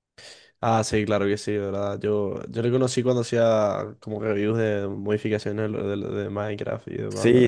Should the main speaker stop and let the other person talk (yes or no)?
yes